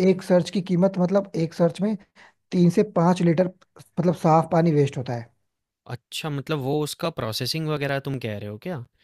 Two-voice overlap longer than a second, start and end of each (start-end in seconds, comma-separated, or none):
none